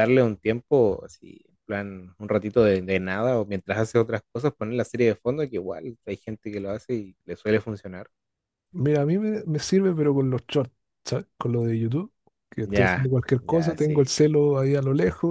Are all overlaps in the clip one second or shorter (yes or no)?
no